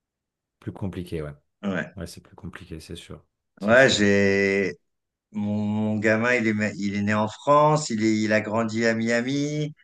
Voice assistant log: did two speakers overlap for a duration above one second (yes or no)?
no